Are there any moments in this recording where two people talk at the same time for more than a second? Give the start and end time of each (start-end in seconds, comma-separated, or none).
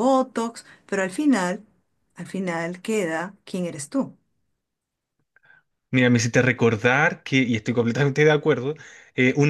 none